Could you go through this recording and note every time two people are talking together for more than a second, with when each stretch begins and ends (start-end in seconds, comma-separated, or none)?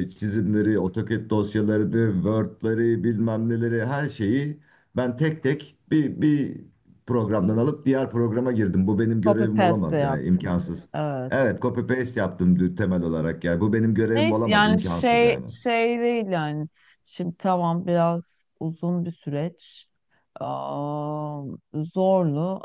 9.2-10.5, 14.1-15.4